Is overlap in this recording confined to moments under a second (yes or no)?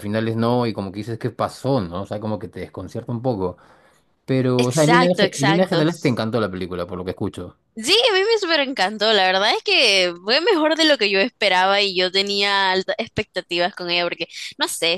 no